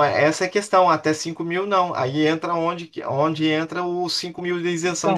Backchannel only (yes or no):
no